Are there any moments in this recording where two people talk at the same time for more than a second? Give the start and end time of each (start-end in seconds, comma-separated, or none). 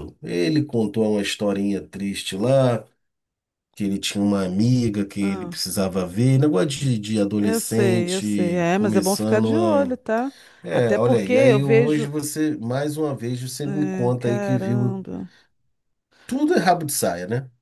7.4-10.0, 10.7-12.1, 13.6-15.0